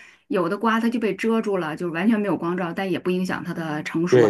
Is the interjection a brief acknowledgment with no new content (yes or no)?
no